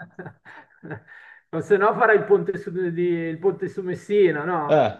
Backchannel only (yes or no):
no